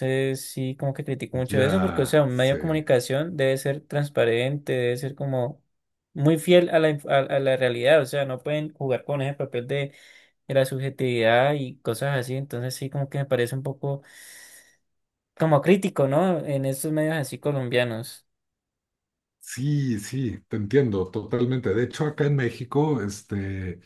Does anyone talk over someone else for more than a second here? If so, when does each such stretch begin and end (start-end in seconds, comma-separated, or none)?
1.5-2.9